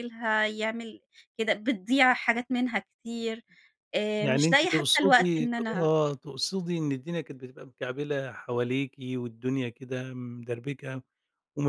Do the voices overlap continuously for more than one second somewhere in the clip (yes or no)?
yes